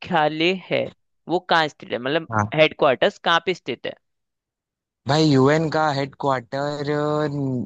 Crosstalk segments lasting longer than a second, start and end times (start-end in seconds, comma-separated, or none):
none